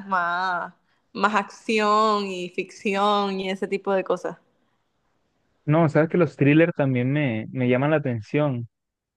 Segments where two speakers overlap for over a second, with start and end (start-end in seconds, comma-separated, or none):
none